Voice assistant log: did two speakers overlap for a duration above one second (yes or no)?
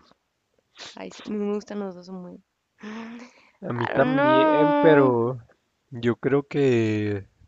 yes